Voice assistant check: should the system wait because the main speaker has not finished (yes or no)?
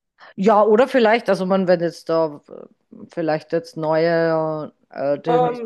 no